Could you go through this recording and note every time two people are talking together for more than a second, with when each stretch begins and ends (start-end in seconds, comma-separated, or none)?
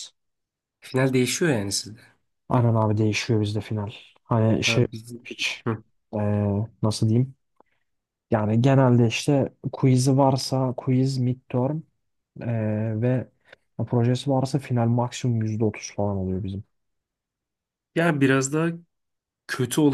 none